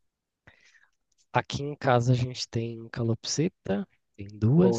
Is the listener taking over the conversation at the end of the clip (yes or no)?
no